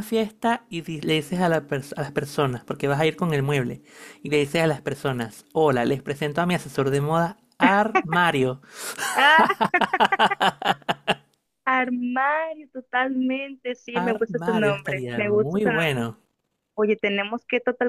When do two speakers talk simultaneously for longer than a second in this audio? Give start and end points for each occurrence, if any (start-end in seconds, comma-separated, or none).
13.9-16.1